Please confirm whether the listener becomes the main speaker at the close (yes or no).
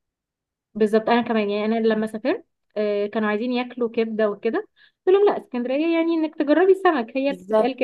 yes